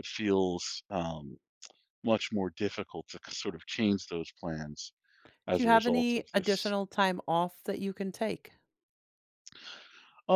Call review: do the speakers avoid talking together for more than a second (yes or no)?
no